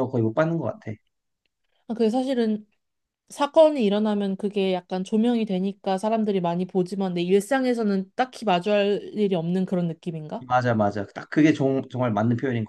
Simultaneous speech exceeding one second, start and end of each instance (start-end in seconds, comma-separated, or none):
none